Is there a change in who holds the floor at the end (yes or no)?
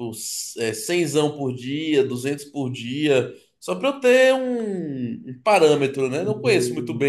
yes